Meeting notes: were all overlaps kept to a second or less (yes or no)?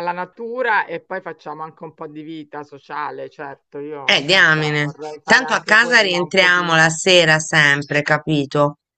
no